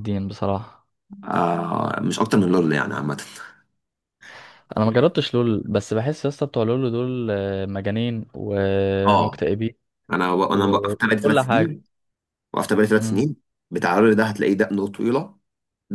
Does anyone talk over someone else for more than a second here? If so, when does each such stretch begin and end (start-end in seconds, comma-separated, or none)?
10.5-11.8